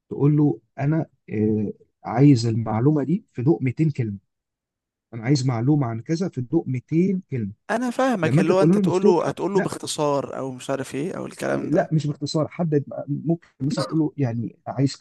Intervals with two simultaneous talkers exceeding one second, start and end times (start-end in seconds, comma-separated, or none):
8.2-9.7